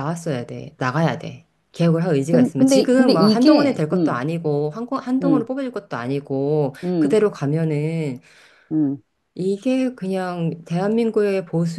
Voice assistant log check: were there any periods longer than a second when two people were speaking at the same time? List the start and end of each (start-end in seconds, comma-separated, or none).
2.3-4.2